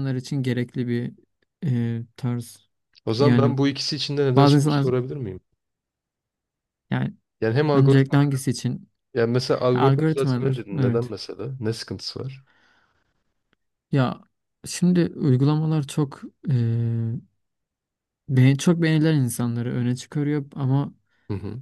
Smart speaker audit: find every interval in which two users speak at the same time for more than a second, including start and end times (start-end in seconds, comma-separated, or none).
9.7-11.1